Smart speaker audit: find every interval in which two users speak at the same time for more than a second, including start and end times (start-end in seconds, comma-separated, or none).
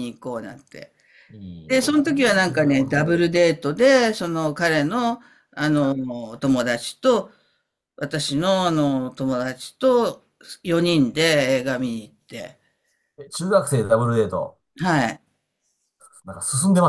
1.7-3.2